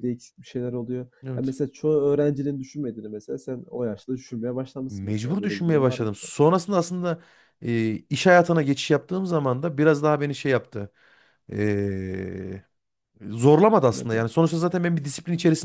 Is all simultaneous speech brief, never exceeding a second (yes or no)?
no